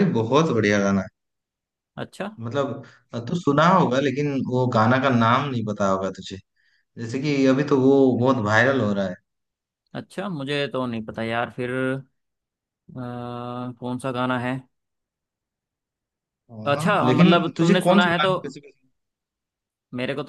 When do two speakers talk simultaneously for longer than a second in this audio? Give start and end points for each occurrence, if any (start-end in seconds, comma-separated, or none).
16.8-18.3